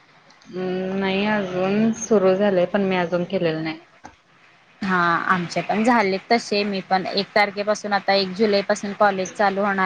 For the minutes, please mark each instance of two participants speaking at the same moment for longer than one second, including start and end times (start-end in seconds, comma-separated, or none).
none